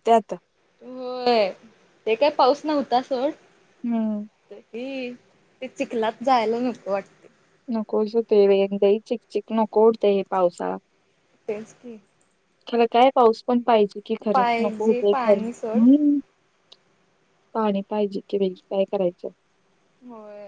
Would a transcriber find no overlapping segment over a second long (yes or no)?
no